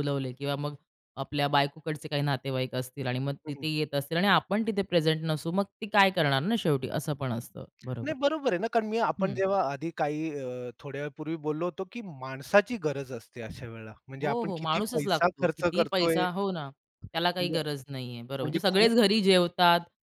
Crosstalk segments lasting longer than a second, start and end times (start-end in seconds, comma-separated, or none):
14.2-16.2